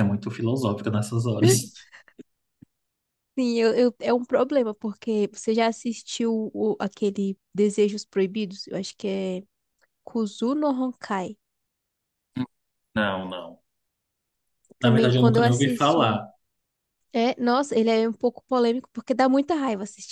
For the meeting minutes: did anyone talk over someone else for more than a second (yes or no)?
yes